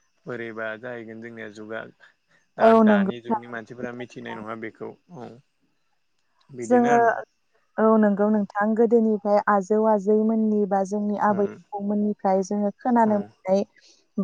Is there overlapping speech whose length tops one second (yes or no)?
yes